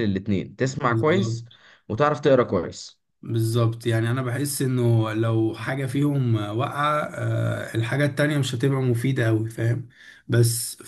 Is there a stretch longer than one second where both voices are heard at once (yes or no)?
no